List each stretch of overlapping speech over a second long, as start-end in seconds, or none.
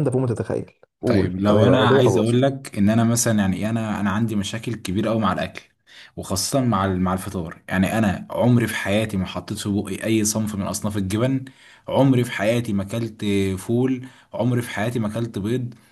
1.1-2.4